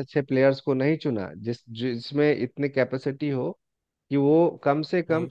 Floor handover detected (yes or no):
no